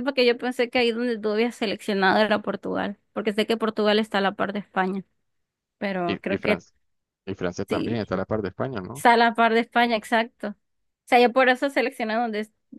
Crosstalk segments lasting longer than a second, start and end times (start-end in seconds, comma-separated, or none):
none